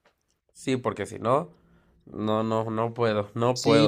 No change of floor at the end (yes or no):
no